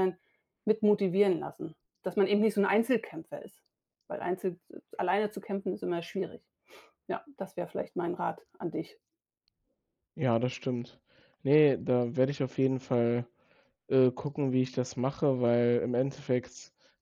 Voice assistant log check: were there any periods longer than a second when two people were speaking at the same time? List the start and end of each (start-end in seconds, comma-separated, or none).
none